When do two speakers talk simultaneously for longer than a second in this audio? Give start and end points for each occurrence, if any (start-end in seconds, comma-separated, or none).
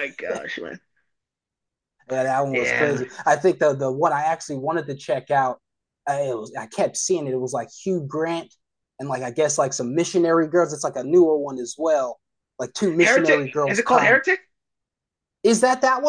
13.0-14.2